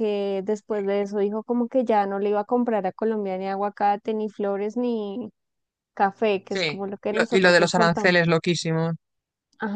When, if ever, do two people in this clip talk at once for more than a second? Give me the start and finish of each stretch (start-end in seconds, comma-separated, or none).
6.5-8.2